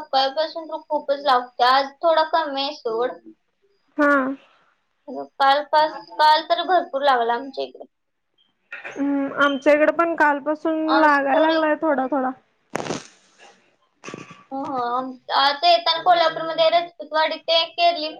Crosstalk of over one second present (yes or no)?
no